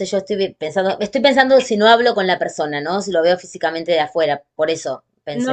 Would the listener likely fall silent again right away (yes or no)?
no